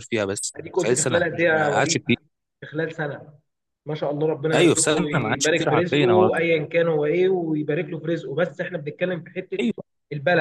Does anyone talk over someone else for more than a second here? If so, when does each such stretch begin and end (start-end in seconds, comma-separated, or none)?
0.6-2.0, 4.5-6.3